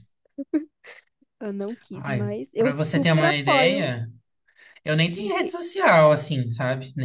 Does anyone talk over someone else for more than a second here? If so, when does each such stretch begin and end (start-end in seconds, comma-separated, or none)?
1.9-3.9